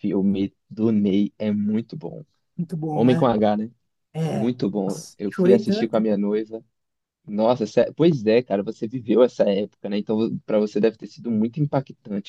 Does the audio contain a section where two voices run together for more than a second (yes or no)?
yes